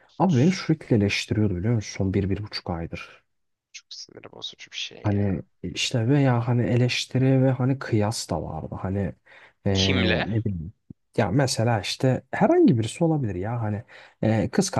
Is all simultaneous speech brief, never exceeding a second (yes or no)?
yes